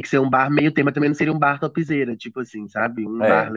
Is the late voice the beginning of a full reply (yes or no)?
no